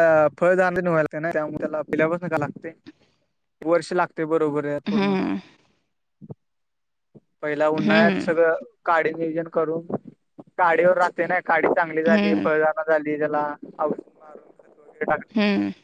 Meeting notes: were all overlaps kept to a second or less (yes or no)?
yes